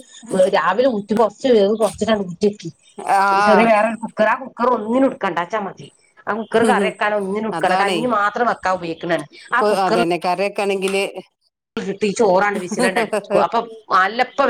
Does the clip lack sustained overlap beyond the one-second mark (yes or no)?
yes